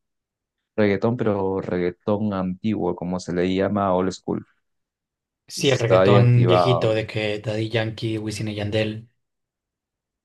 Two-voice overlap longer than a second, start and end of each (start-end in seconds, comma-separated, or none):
5.6-6.9